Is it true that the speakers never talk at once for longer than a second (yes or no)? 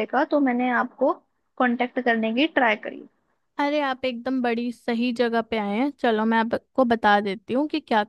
yes